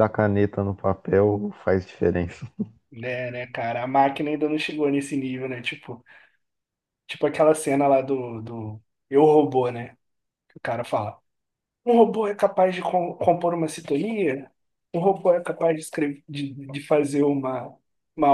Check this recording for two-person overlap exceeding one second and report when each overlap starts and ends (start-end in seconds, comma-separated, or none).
none